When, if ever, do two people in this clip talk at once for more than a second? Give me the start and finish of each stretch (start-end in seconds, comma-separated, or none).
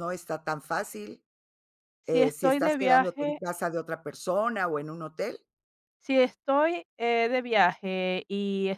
2.0-3.4